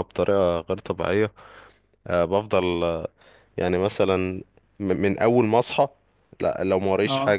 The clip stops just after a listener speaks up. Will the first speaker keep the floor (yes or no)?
yes